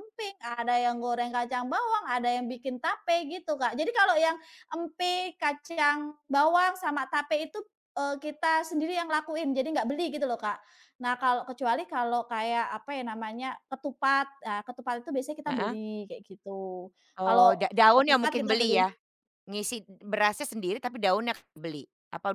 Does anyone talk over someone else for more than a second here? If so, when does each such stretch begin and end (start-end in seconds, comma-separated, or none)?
17.3-18.9